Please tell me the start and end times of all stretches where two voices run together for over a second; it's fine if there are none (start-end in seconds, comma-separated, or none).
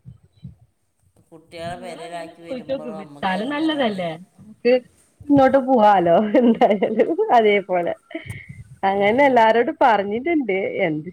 1.8-4.0